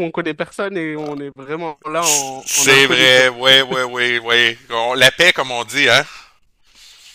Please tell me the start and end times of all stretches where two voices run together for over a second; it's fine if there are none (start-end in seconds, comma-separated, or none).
2.0-3.3